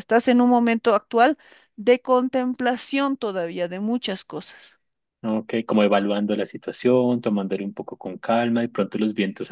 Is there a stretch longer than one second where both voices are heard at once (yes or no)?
no